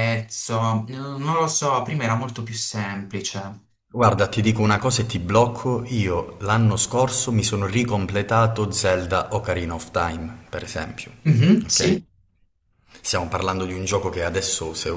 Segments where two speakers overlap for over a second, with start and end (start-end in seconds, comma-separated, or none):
none